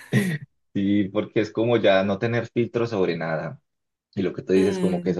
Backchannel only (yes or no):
yes